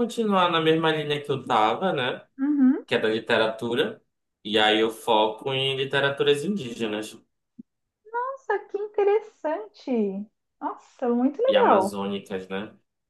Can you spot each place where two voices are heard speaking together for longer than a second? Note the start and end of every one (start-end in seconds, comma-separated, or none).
none